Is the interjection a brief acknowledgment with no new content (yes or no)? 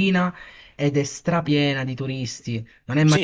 no